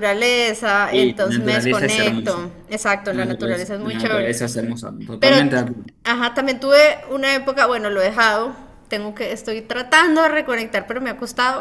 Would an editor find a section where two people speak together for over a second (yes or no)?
yes